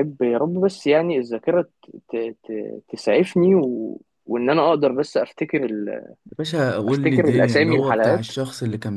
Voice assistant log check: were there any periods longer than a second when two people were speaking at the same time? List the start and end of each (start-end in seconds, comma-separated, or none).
6.9-8.3